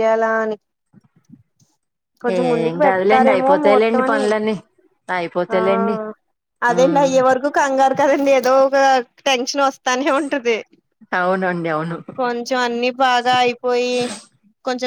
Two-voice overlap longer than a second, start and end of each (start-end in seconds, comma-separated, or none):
2.4-4.2